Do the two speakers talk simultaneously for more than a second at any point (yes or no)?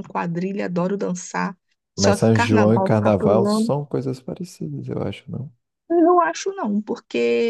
yes